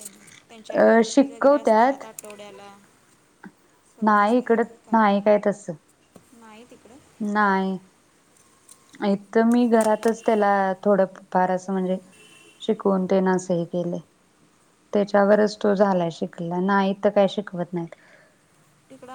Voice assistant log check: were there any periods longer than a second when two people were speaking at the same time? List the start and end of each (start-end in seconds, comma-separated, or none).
0.8-2.0